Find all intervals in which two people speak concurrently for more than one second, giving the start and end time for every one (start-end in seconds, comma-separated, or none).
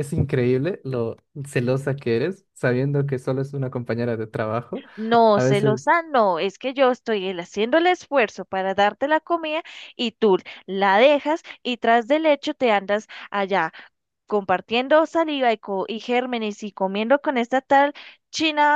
none